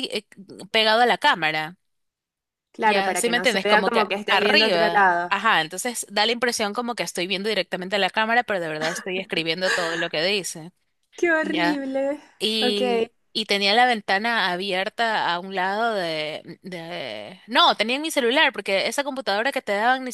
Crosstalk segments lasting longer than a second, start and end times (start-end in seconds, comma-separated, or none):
2.8-5.3